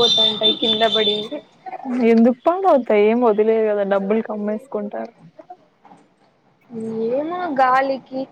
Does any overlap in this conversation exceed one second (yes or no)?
no